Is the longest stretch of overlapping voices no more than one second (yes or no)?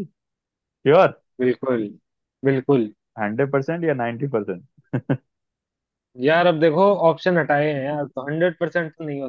yes